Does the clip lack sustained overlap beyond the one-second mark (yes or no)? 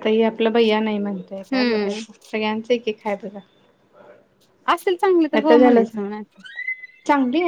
yes